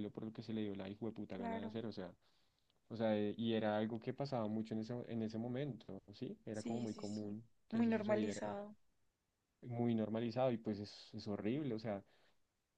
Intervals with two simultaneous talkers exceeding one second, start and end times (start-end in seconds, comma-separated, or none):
6.5-8.4